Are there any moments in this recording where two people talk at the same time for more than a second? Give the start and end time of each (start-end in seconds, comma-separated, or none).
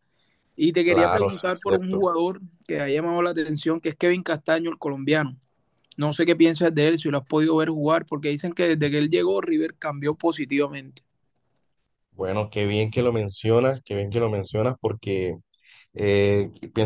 0.8-2.0